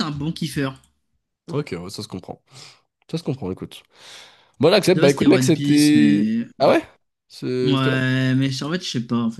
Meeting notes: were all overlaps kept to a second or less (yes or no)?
no